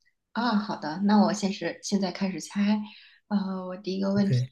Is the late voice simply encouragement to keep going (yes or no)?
yes